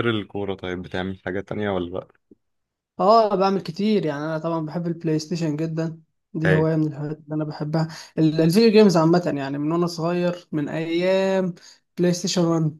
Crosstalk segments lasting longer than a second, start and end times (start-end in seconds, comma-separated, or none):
none